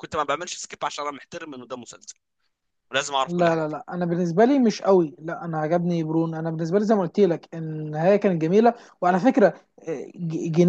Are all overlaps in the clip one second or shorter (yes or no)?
yes